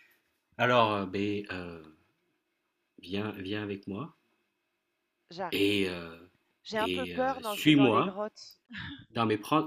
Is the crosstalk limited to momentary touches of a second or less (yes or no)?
no